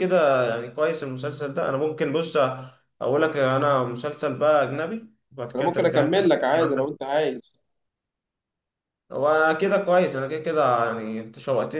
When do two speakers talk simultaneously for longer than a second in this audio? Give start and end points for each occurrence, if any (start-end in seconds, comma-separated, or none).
5.5-7.0